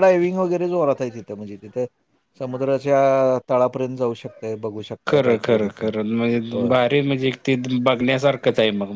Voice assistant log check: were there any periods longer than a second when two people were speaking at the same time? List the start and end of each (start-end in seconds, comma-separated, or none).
none